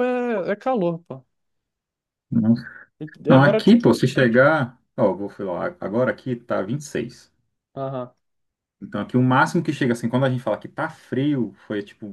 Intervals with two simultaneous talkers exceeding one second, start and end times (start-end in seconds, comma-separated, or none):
none